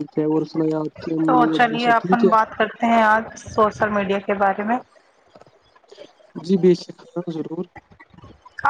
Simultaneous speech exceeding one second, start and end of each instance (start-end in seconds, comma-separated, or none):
none